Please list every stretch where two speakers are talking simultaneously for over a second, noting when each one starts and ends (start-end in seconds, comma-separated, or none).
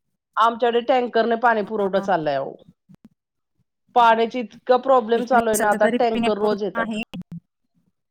5.2-6.9